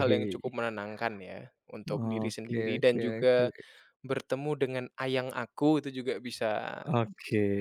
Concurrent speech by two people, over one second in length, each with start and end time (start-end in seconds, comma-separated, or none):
1.9-3.4